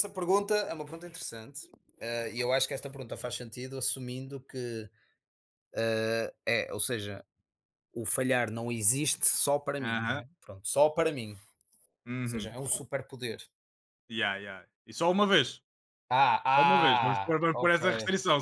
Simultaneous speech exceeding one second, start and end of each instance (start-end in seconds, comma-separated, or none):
16.5-17.8